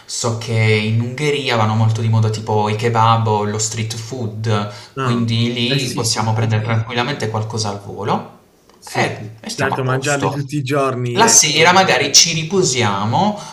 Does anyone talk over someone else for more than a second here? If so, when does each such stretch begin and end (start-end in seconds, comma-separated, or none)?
5.0-6.5, 8.9-10.4